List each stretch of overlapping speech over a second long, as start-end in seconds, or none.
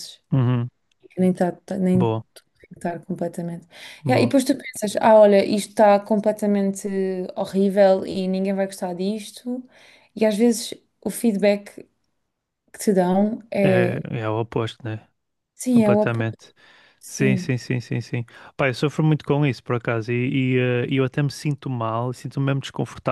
none